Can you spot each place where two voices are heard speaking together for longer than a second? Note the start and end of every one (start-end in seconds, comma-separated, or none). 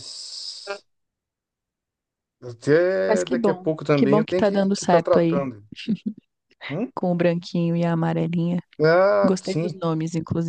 3.1-5.4